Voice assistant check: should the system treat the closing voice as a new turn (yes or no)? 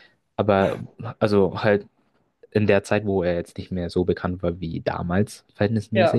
no